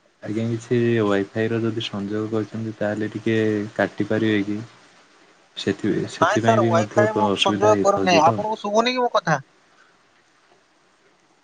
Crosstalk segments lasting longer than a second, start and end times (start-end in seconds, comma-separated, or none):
6.2-8.4